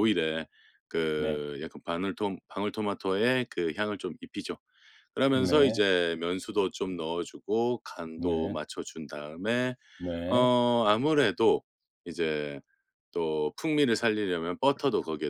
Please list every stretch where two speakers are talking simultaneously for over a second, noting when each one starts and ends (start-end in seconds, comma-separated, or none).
none